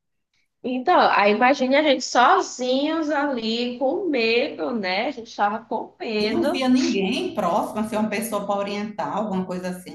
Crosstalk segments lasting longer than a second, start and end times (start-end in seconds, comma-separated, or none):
none